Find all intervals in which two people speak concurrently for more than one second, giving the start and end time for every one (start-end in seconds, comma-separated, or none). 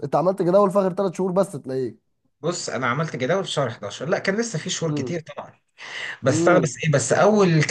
none